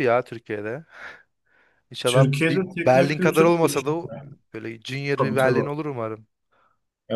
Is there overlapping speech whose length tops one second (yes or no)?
yes